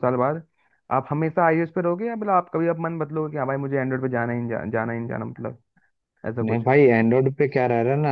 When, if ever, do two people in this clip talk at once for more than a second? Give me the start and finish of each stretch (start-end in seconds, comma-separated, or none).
none